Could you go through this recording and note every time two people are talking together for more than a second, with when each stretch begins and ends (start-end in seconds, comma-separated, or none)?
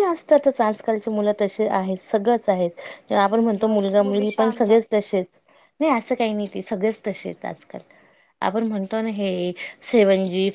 3.3-5.0